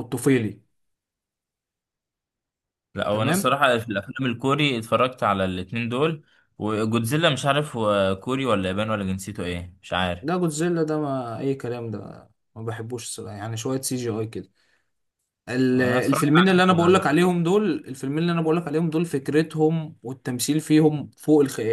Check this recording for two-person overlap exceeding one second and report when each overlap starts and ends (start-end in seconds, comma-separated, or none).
15.7-17.2